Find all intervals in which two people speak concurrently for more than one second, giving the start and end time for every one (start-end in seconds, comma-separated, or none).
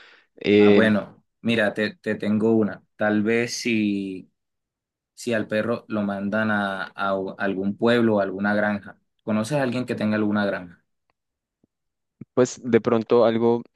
none